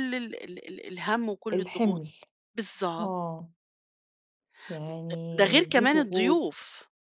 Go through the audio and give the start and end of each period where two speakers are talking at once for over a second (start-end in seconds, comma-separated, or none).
5.4-6.7